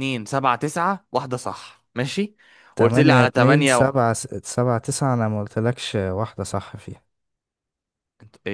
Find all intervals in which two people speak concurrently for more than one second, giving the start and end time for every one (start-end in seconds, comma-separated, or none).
2.8-4.0